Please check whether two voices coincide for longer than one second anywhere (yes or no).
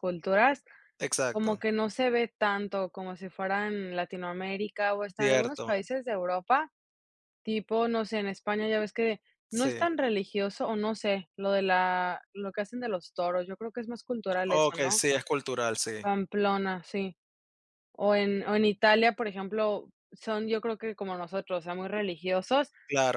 no